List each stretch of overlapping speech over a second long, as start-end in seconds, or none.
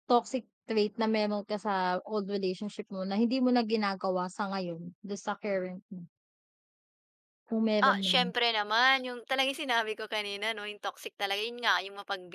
none